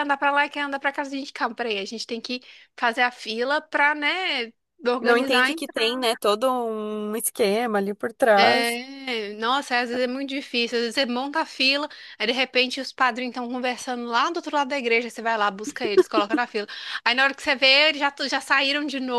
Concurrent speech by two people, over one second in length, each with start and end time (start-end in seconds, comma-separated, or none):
none